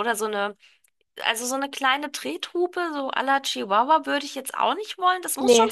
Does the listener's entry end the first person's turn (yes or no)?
no